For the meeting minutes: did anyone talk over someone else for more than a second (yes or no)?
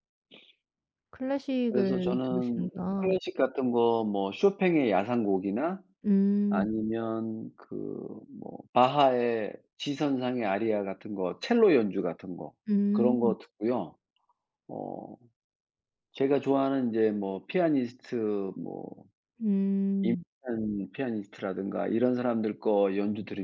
yes